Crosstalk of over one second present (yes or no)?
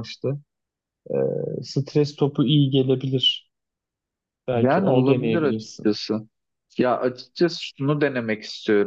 yes